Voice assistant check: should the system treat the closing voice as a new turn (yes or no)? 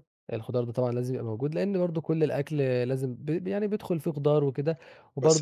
yes